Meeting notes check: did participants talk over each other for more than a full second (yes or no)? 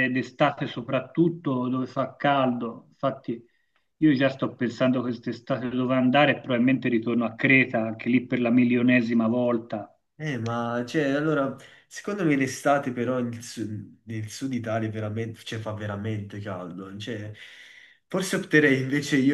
no